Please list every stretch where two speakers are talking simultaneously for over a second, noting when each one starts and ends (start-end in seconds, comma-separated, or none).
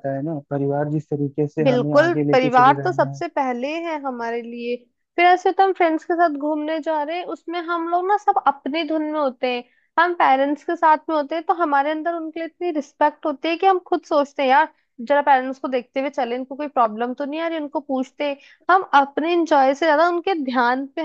1.6-3.2